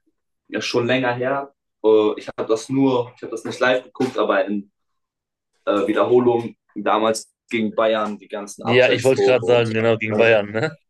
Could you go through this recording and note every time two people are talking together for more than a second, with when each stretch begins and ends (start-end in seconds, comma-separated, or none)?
8.6-10.4